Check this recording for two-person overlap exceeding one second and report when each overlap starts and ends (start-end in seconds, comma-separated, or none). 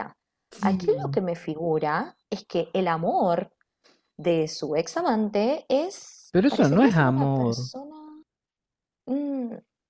6.3-7.7